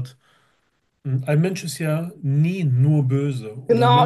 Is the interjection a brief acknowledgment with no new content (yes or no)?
no